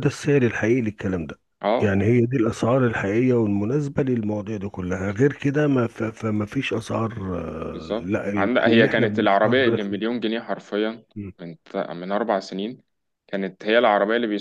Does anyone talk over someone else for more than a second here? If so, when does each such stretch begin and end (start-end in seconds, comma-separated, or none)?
7.7-10.1